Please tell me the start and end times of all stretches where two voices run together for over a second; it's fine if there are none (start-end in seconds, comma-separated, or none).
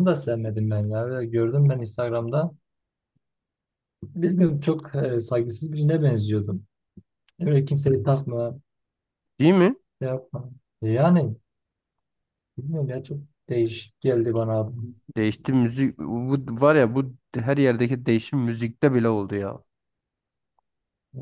none